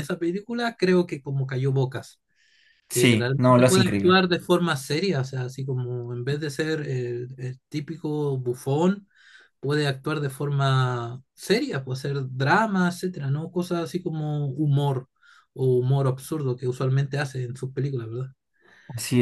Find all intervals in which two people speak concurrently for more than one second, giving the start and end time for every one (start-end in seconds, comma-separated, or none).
2.9-4.2